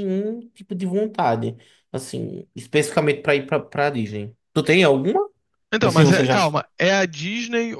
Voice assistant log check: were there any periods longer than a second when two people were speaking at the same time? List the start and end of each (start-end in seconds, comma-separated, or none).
none